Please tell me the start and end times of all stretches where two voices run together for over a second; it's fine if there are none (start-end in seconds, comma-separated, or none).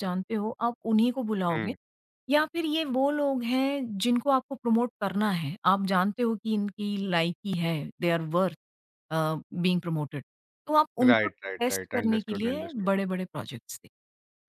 11.0-12.9